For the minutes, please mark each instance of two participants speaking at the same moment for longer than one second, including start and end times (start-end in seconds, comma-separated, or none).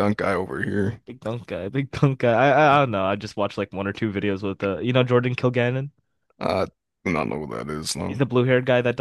none